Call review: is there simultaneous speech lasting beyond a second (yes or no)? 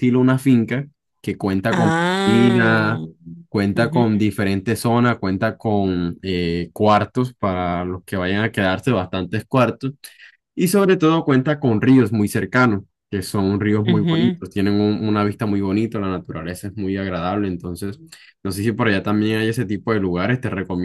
yes